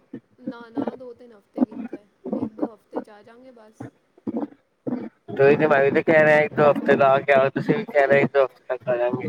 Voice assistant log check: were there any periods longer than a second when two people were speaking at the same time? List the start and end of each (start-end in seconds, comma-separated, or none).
none